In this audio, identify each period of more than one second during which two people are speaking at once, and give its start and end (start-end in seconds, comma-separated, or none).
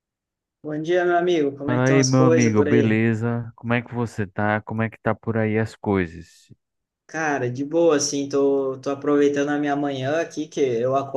1.6-3.0